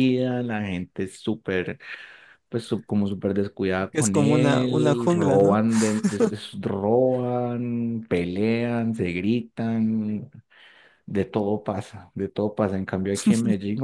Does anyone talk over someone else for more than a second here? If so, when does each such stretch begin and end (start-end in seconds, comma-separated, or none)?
3.9-5.6